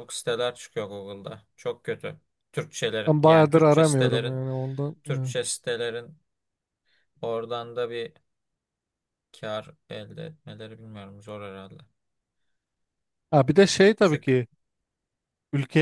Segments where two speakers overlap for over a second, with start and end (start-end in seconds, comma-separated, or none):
3.1-4.4